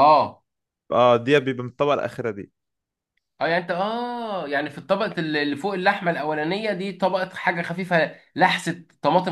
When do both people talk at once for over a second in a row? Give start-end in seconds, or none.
none